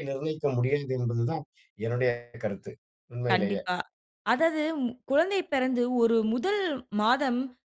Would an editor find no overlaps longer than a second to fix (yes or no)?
yes